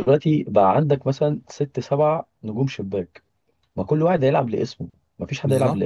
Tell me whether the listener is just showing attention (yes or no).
no